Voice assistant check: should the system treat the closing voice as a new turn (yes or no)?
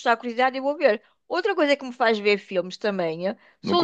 yes